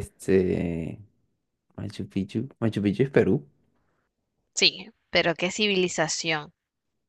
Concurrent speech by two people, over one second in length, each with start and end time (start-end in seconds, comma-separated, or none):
none